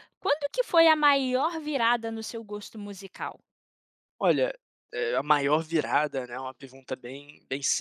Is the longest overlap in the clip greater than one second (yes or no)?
no